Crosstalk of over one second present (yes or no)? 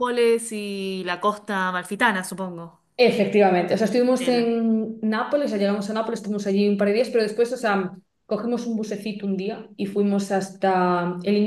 no